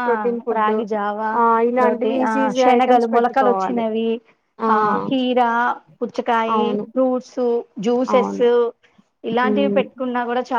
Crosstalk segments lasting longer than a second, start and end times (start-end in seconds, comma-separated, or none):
1.8-3.8